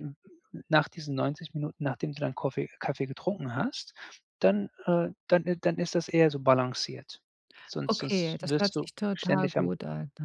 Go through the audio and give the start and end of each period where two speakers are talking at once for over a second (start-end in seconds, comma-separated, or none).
7.9-9.8